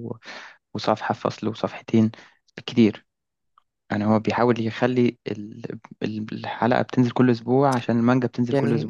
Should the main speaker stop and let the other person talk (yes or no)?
no